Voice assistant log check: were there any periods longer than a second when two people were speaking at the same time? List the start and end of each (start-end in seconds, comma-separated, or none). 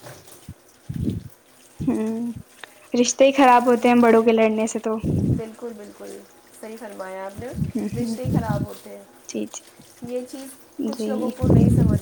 none